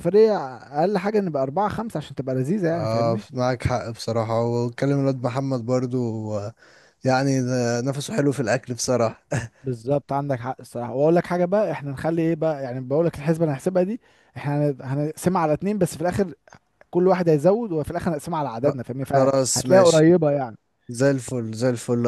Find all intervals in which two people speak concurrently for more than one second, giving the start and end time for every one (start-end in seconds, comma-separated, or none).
18.6-20.1